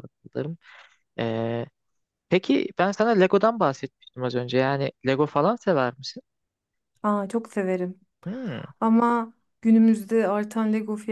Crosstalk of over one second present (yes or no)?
no